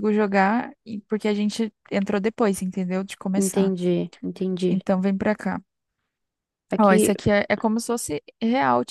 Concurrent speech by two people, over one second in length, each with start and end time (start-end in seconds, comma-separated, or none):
none